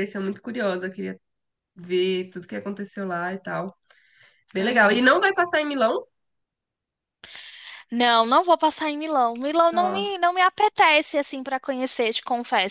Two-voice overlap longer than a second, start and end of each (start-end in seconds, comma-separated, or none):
none